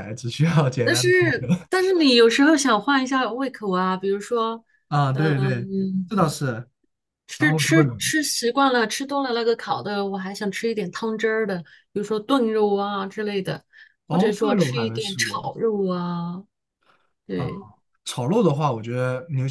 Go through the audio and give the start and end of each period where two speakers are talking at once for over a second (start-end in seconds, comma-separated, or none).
14.1-15.6